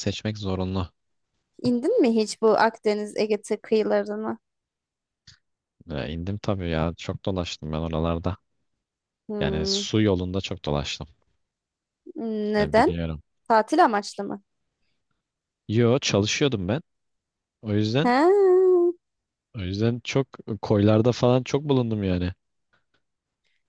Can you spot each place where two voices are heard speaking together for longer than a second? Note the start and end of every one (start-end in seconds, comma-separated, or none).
none